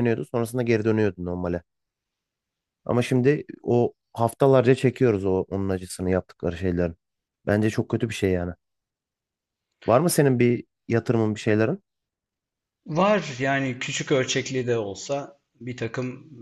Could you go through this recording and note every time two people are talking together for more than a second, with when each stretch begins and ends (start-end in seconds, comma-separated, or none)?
none